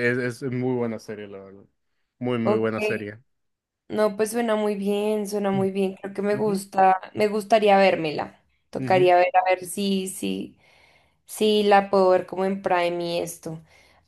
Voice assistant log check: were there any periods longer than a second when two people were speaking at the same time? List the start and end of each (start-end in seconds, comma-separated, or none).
none